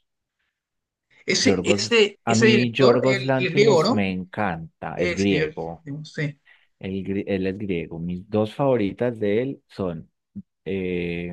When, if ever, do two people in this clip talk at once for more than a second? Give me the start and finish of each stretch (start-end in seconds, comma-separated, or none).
1.4-4.1